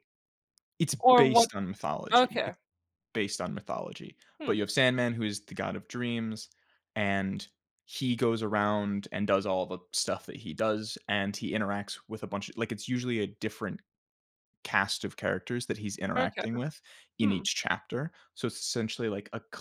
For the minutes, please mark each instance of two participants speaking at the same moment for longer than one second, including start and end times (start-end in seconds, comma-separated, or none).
none